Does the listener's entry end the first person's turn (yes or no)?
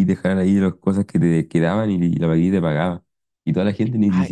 no